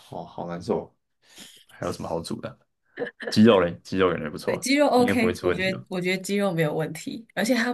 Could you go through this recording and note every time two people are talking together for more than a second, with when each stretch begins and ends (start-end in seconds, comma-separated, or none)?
4.4-5.8